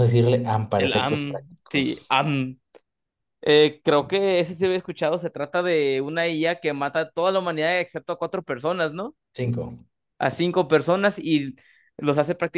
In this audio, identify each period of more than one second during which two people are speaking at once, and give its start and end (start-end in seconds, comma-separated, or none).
0.8-2.2